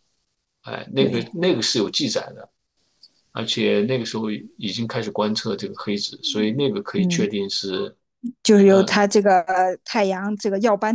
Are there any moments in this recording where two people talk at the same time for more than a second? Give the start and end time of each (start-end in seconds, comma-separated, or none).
none